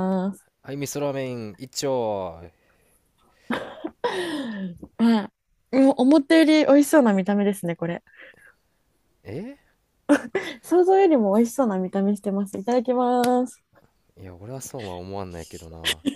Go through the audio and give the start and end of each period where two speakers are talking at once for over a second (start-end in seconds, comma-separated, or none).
none